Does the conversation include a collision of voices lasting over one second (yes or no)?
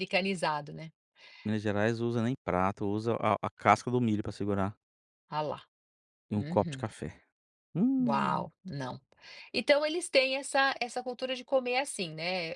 no